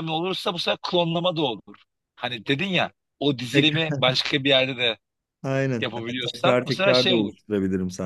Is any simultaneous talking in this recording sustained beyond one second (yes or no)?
yes